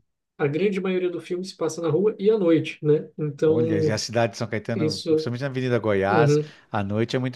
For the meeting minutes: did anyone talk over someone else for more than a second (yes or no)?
no